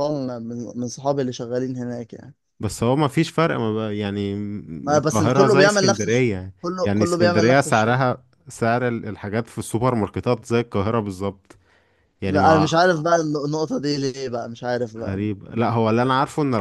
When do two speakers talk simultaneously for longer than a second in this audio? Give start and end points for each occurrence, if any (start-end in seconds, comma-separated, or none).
5.0-8.0